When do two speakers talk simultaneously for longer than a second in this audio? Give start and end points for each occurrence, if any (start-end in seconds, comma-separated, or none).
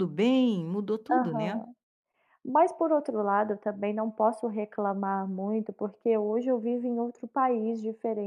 none